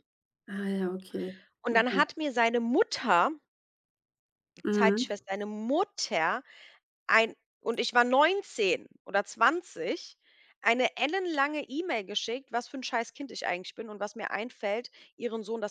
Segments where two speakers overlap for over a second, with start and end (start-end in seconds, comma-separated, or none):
none